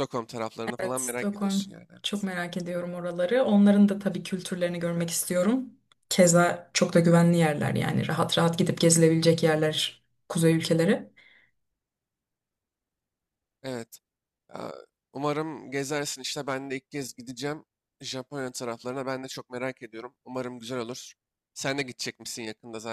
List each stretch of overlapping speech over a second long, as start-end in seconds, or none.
0.8-2.3